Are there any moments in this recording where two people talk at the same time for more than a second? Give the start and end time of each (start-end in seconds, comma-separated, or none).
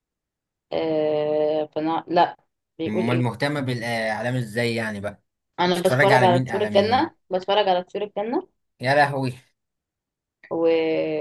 5.7-7.1